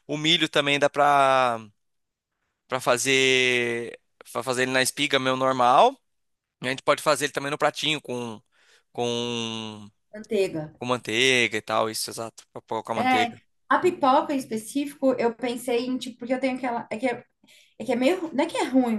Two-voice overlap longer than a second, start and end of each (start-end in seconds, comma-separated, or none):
none